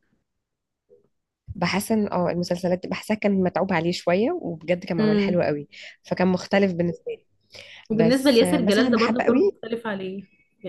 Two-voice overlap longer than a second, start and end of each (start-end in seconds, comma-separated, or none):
7.9-9.6